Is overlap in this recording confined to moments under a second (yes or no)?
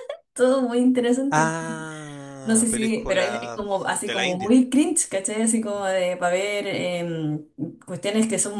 no